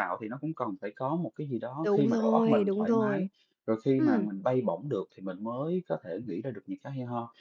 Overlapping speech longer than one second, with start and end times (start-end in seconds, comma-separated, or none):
1.8-3.3